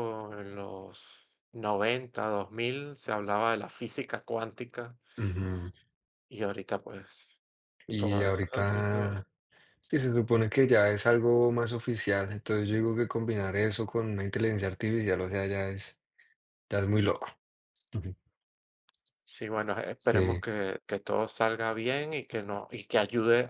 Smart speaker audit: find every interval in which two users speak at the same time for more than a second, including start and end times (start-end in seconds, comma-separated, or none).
8.0-9.2